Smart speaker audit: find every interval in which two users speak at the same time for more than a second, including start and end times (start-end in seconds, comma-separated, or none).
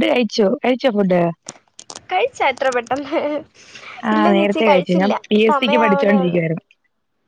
4.2-6.4